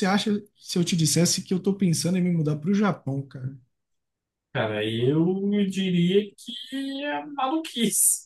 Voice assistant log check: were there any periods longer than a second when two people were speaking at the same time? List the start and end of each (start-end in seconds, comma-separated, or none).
none